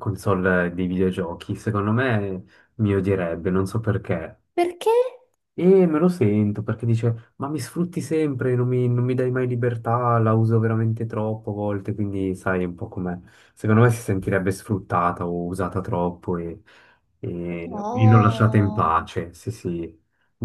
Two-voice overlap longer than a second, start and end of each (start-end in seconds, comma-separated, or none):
17.6-19.0